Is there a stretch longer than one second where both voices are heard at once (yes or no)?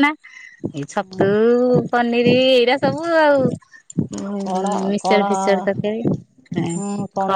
no